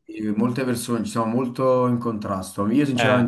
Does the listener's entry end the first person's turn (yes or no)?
no